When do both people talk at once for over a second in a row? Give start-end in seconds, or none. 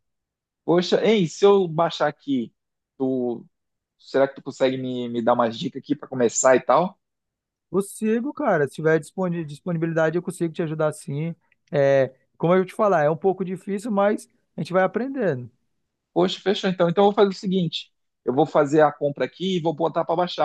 none